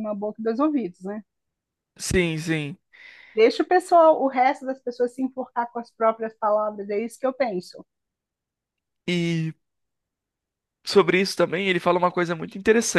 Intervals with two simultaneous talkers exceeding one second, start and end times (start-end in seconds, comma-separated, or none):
none